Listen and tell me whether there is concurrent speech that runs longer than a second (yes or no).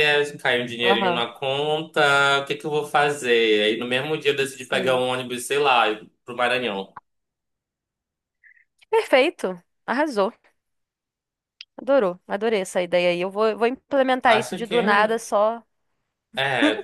no